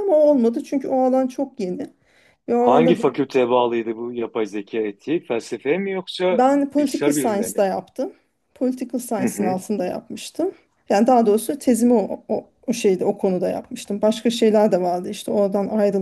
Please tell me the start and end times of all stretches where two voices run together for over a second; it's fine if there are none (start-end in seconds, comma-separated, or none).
6.3-7.7